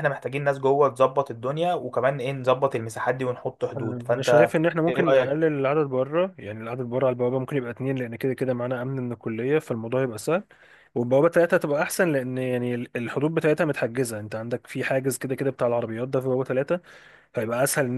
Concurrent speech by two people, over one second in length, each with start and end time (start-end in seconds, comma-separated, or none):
3.8-5.4